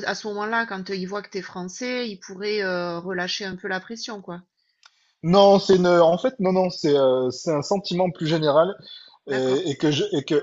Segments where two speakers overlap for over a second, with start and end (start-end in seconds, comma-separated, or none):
none